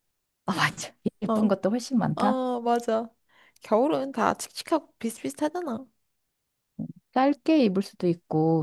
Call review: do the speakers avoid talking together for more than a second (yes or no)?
yes